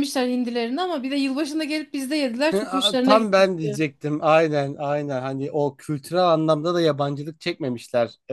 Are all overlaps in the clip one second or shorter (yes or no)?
no